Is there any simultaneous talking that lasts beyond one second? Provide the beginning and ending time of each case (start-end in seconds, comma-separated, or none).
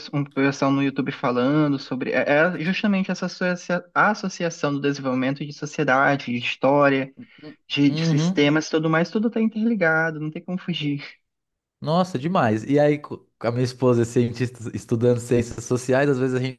none